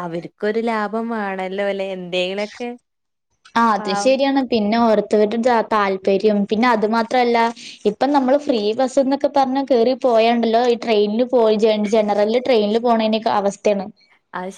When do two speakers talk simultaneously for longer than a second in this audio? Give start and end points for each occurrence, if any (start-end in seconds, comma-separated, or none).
none